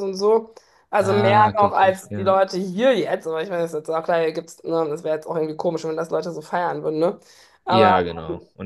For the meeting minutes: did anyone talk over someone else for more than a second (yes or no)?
yes